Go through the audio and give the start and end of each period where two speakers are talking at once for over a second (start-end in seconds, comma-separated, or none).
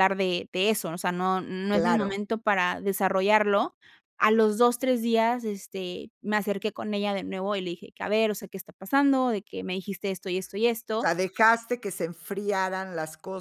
none